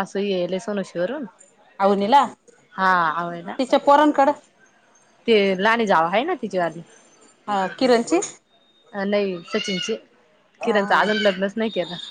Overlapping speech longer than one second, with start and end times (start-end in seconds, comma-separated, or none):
none